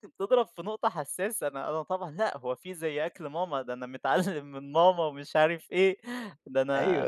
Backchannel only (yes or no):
no